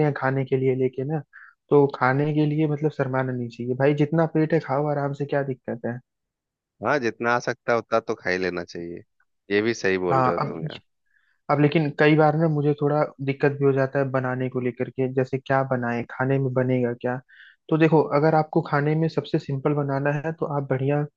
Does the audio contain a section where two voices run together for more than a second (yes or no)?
no